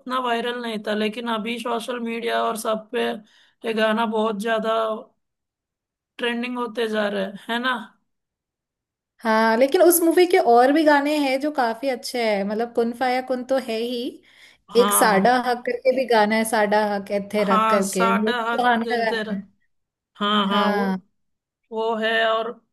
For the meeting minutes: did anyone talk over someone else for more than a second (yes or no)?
yes